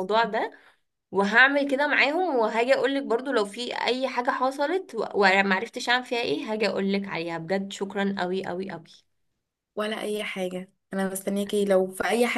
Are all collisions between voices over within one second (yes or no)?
yes